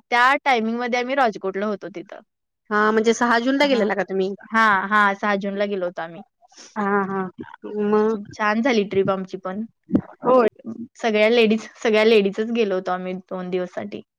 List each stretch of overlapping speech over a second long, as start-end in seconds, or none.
none